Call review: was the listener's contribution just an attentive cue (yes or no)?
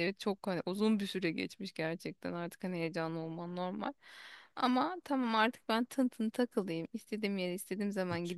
yes